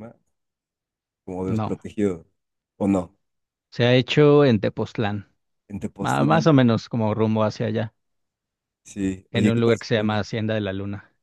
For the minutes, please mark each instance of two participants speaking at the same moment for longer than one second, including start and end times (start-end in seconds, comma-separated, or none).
none